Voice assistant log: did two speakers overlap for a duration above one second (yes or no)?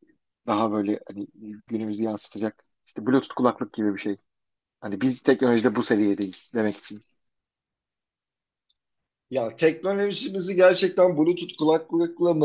no